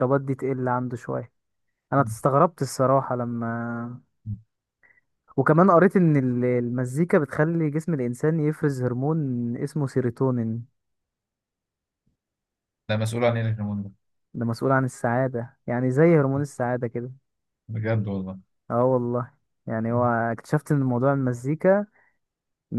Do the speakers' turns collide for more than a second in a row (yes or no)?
no